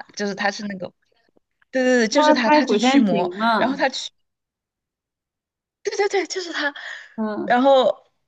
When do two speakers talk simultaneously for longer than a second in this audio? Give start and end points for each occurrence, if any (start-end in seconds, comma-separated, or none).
2.1-3.8